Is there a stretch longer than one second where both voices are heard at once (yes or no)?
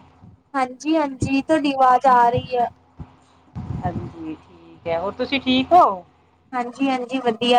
no